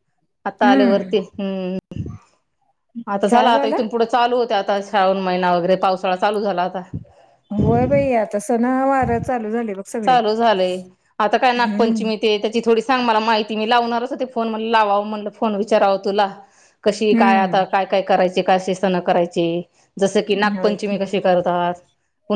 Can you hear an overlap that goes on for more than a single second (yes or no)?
no